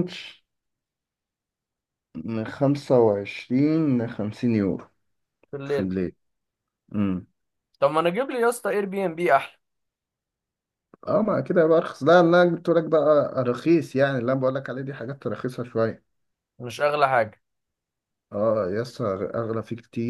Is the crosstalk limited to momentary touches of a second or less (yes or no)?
yes